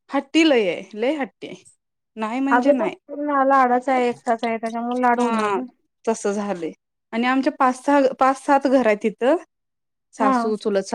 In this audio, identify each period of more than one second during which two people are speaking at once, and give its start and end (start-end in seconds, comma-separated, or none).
none